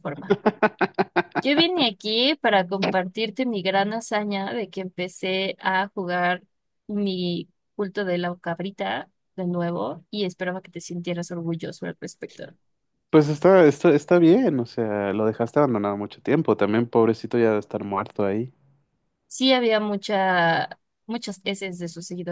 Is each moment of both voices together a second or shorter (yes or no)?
yes